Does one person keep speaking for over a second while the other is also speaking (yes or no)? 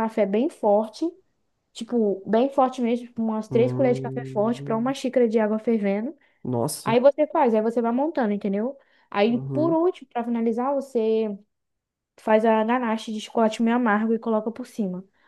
yes